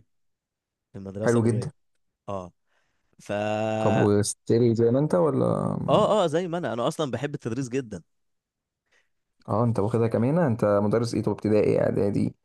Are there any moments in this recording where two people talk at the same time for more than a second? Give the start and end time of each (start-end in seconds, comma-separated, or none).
none